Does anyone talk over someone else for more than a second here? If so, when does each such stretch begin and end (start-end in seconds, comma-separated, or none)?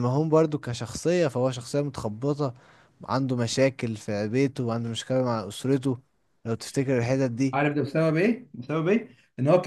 none